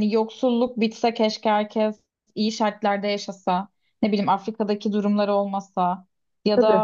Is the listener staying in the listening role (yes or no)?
yes